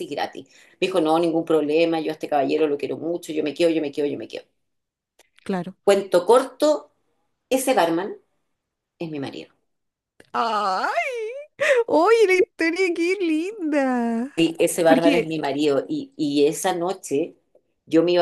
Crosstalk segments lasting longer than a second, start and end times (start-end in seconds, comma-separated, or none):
none